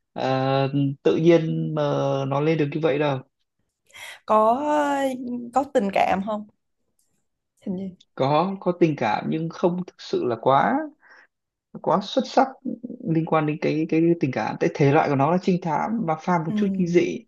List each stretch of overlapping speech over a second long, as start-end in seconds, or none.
none